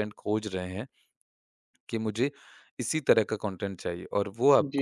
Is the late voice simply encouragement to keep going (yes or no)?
yes